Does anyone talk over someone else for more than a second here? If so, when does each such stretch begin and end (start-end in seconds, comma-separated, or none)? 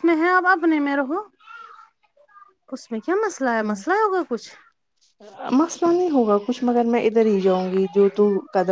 none